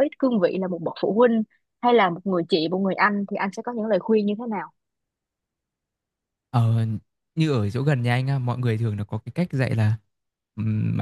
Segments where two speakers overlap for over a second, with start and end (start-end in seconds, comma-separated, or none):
none